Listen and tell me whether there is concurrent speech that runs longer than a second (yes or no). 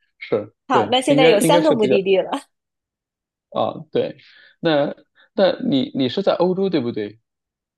yes